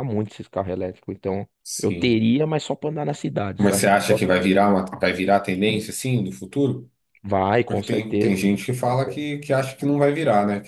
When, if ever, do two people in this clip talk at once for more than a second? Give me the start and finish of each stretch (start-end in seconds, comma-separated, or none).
7.7-9.2